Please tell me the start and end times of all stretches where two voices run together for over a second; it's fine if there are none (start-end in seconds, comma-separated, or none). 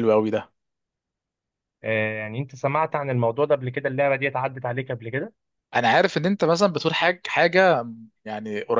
none